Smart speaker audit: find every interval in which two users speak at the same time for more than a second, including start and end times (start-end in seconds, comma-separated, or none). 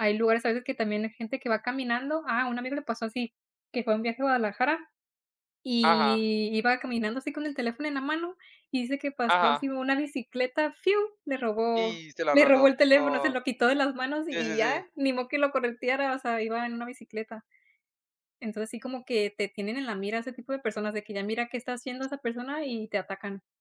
11.8-13.4